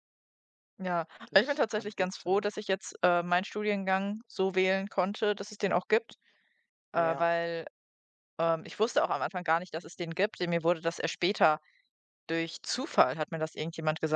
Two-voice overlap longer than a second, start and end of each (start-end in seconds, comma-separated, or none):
1.2-2.5